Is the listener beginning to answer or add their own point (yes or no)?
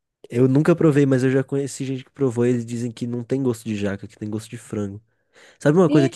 yes